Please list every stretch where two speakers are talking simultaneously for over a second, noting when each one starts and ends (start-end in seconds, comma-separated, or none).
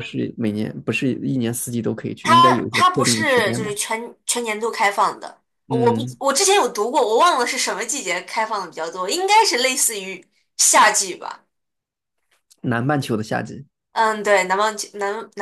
2.2-3.7